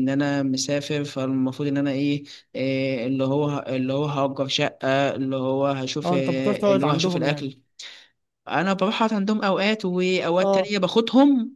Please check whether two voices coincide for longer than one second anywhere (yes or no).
yes